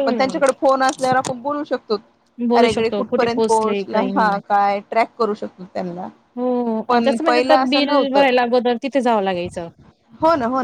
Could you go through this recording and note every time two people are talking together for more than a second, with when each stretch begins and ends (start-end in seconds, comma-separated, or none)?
2.6-4.3, 6.9-8.2